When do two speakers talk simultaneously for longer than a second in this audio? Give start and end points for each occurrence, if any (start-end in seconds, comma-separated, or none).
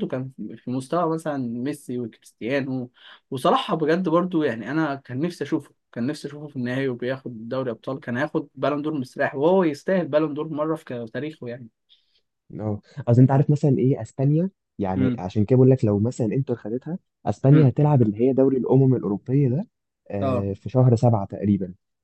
none